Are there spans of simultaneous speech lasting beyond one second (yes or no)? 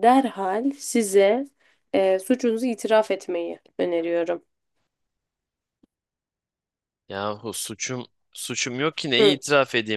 no